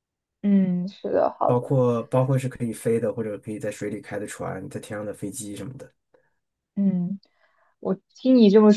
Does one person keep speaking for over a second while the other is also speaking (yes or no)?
no